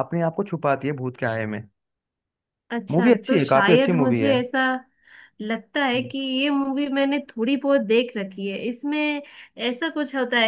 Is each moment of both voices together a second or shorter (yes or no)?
no